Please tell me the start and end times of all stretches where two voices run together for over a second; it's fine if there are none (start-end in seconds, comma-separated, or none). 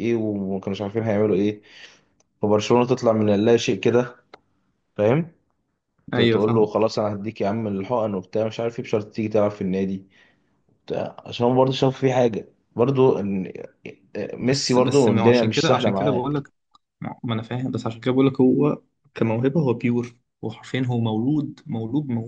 14.4-16.3